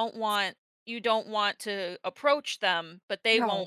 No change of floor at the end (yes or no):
yes